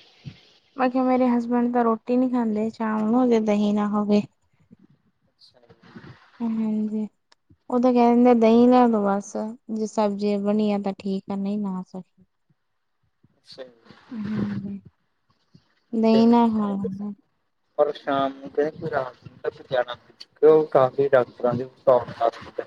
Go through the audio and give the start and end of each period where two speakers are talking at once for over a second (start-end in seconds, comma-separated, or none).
none